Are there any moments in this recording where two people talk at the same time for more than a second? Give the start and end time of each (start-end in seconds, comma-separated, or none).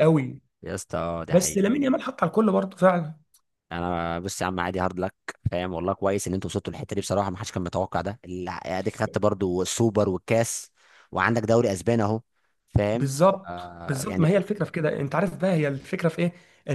12.9-14.5